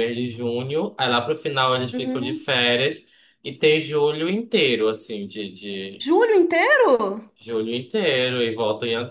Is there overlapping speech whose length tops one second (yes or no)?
no